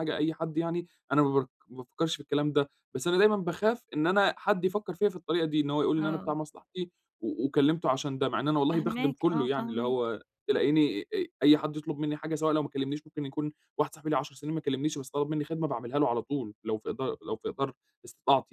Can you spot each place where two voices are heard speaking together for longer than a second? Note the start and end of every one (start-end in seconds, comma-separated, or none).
8.7-10.1